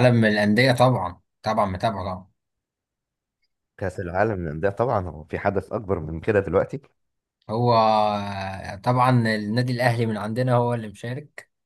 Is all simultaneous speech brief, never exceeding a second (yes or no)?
yes